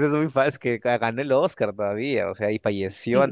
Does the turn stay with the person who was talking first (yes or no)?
yes